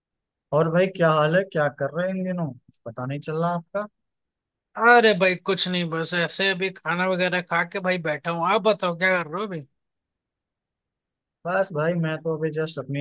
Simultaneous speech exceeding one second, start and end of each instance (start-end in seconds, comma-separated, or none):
none